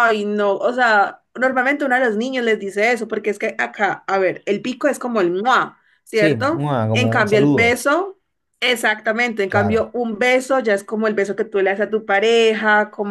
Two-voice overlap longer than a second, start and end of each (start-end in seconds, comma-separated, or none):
6.1-7.8